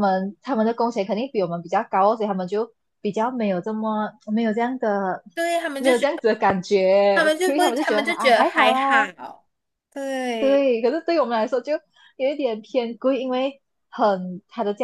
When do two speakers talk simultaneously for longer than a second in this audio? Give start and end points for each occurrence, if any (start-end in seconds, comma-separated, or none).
7.1-9.1